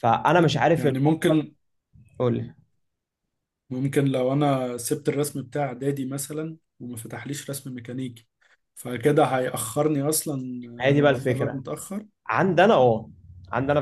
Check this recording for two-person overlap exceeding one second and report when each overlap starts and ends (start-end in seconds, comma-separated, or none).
none